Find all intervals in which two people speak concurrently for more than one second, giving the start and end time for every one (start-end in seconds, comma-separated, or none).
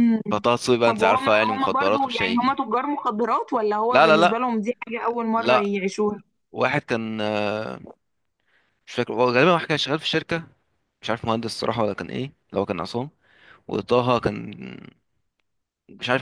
0.8-2.6